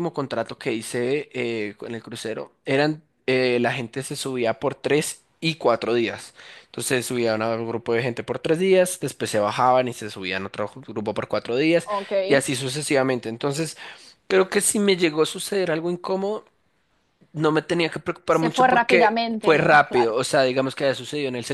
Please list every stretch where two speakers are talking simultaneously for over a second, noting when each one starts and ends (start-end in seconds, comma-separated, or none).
18.3-20.1